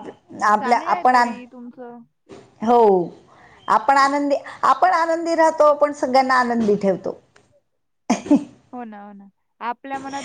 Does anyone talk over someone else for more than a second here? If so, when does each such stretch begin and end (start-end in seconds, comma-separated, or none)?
0.6-2.0